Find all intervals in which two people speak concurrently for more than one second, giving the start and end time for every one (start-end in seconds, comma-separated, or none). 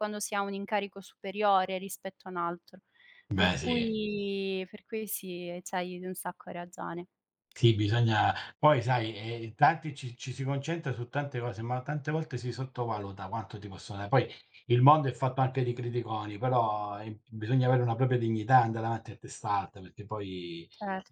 none